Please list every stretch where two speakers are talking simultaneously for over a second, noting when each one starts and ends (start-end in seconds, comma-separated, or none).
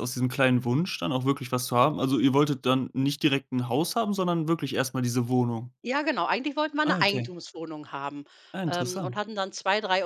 none